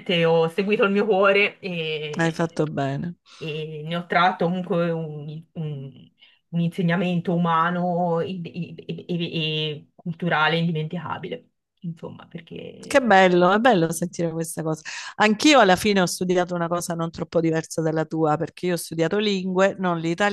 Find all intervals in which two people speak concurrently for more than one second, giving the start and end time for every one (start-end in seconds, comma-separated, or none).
none